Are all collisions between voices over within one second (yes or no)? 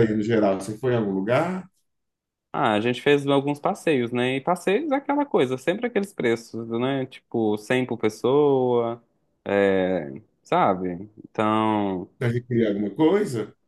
yes